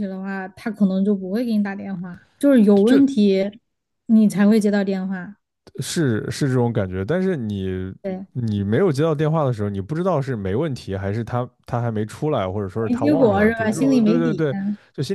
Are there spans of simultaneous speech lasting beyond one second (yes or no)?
yes